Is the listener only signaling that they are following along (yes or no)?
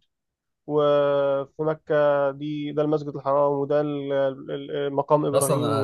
no